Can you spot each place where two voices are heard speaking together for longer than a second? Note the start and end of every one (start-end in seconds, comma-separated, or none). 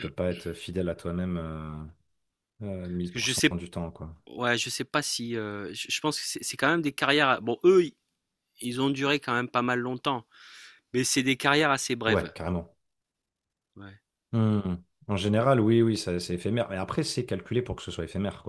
none